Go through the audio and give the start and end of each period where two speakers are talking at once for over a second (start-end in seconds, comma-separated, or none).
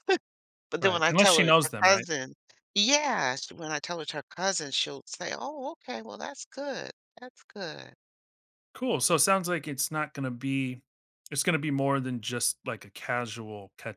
0.8-2.1